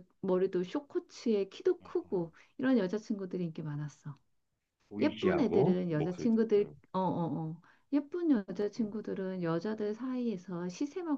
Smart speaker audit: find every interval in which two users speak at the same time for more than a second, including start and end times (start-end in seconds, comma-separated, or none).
5.0-6.8